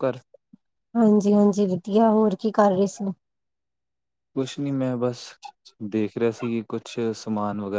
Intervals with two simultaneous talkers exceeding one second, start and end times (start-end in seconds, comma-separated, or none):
none